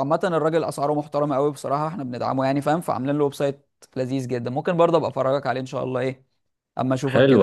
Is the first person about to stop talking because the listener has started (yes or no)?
yes